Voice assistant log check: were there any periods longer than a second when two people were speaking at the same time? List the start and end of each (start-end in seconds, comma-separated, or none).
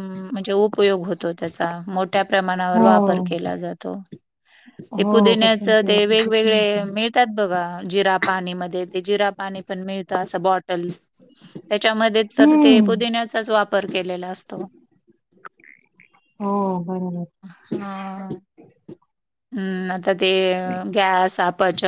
5.0-6.8